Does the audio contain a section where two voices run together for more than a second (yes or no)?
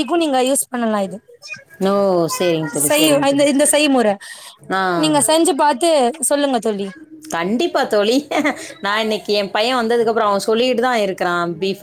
no